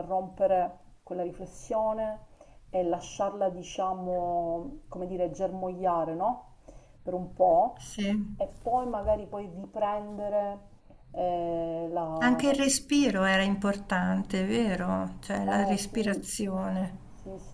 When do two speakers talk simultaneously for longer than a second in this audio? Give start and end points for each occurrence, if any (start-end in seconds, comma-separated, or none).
none